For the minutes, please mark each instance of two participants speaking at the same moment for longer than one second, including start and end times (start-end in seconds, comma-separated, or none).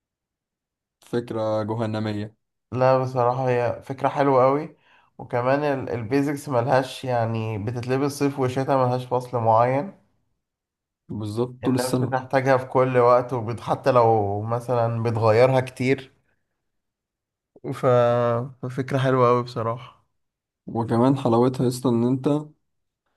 none